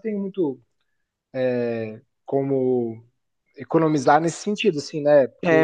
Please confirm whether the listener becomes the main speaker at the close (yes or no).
yes